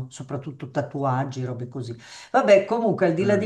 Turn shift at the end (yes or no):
no